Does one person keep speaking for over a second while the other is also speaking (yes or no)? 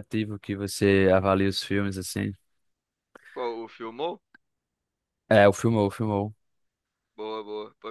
no